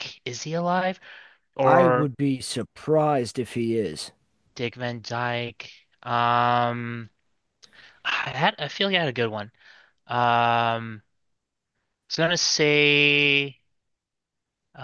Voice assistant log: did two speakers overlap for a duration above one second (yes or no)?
no